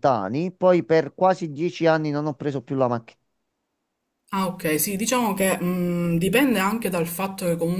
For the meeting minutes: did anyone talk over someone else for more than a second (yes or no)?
no